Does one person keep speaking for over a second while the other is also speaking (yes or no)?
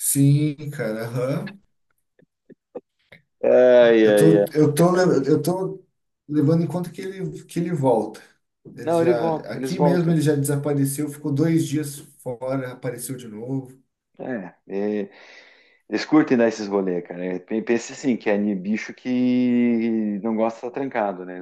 yes